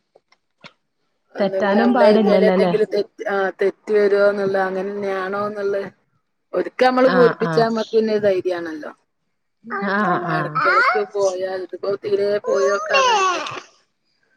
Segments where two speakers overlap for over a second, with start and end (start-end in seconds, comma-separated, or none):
1.4-2.7